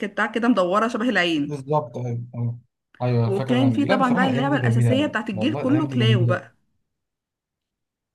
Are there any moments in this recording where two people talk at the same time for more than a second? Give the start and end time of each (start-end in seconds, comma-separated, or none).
3.2-6.4